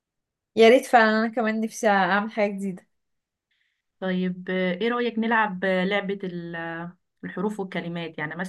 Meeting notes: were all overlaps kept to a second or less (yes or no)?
yes